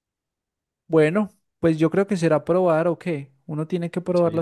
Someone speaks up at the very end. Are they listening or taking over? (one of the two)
taking over